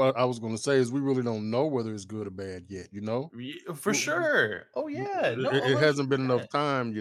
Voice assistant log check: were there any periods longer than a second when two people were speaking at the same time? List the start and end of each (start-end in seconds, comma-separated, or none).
5.0-6.5